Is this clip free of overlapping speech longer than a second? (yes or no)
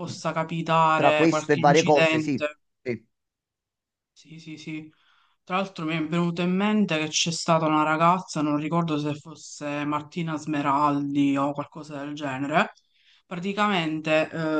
no